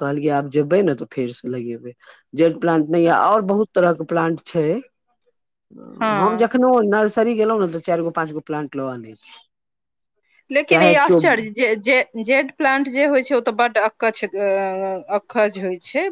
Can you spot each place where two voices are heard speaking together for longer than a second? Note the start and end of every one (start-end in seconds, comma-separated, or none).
none